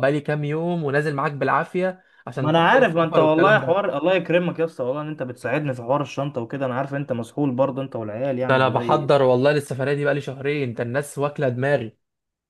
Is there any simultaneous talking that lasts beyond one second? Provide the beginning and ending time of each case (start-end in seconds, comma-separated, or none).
2.3-3.8